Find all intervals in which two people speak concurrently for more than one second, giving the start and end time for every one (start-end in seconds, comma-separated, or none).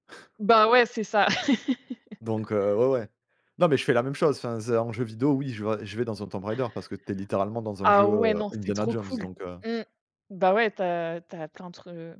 7.8-9.3